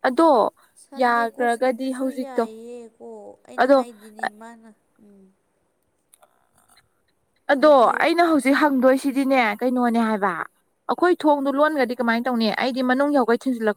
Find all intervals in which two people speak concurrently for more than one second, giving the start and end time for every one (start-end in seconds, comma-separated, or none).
0.9-2.5